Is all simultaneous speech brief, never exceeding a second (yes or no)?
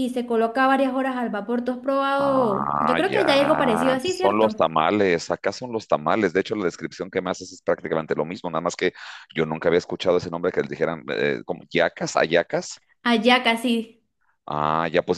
no